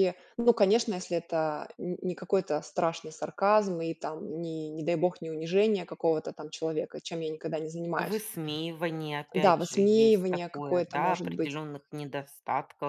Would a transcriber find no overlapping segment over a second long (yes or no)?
no